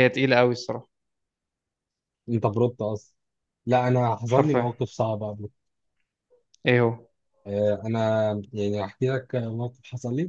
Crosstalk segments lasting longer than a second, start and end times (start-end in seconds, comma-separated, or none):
none